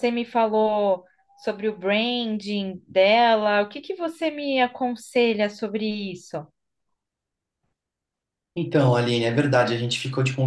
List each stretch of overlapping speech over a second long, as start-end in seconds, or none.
none